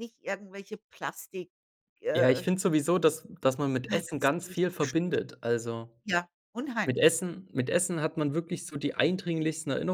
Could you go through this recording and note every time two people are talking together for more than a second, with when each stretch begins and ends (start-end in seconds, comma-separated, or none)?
3.9-5.2